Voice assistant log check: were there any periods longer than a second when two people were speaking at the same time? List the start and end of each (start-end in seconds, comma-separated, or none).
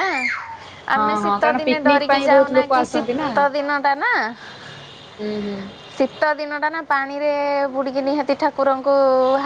1.0-3.3